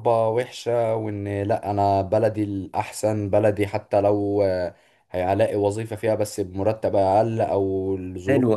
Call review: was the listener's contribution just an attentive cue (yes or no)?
no